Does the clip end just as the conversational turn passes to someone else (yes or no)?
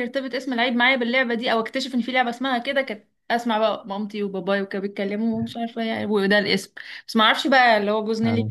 no